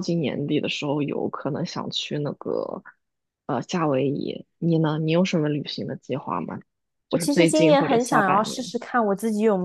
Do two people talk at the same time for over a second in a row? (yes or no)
yes